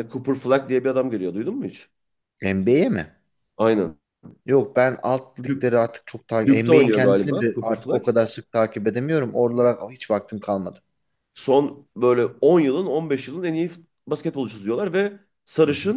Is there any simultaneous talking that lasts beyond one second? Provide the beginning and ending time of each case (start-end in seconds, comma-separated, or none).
6.5-8.0